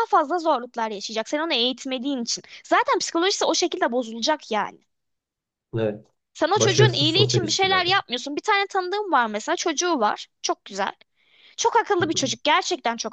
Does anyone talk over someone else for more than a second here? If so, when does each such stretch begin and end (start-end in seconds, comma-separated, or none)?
6.5-7.9